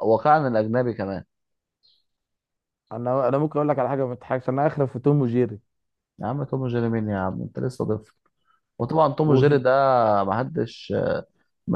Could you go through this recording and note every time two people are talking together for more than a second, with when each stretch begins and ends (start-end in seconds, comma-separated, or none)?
none